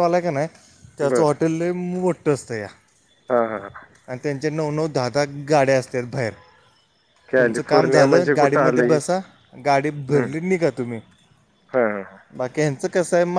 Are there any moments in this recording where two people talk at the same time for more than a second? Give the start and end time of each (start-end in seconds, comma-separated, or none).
7.4-9.0